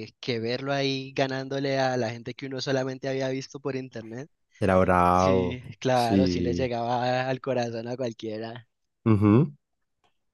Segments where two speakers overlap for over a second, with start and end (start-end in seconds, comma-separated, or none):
5.1-6.8